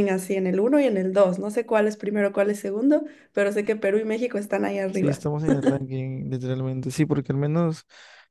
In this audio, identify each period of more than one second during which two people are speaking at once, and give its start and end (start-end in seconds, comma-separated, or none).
none